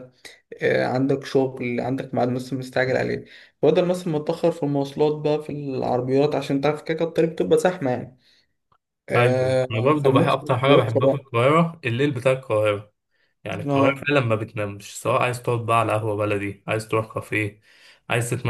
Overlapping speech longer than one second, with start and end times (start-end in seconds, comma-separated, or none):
9.1-11.3